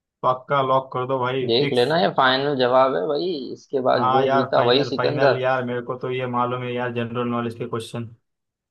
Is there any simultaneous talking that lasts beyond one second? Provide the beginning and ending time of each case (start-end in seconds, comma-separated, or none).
4.0-5.4